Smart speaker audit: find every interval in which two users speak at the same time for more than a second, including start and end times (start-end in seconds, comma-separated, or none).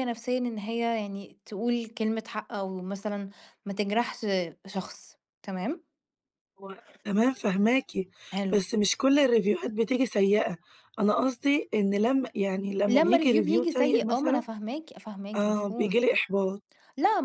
12.9-14.4